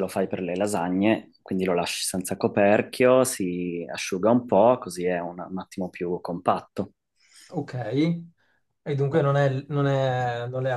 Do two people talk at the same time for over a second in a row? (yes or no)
no